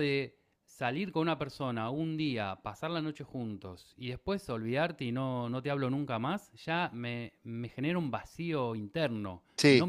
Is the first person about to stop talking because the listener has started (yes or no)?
no